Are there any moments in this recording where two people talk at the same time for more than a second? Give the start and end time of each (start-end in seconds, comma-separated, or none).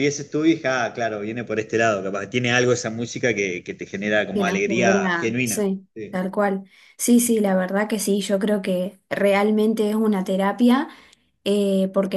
4.3-6.2